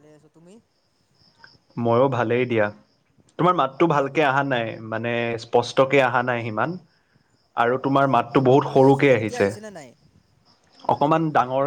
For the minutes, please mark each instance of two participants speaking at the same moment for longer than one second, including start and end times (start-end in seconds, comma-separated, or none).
7.9-9.5